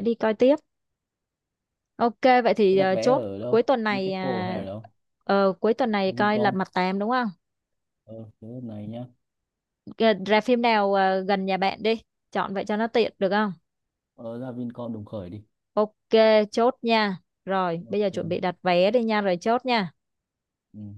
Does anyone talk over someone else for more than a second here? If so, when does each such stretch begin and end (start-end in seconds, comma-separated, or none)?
2.7-4.6